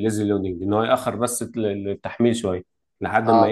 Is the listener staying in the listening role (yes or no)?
yes